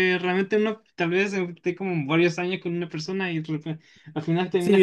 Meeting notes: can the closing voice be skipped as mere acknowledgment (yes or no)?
no